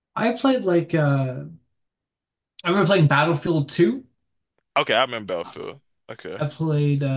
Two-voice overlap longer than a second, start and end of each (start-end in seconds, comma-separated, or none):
none